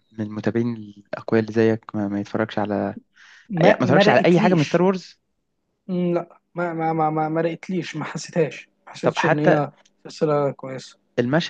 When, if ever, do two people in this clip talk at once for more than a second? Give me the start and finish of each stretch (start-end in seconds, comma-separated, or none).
3.6-4.8